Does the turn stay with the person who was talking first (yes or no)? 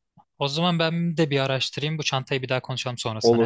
no